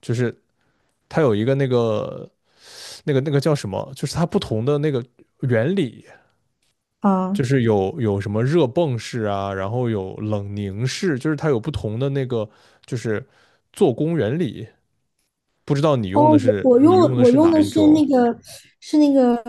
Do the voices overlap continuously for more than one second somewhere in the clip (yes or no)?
yes